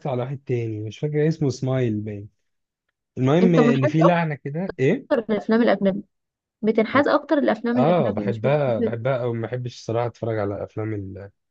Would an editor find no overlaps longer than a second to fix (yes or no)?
no